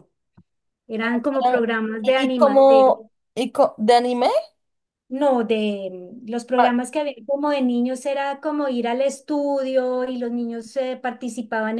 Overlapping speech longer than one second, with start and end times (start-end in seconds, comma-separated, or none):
1.0-2.6